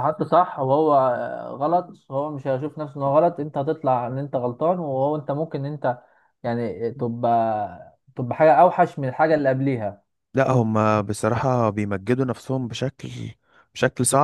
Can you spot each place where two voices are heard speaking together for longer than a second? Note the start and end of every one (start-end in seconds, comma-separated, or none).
none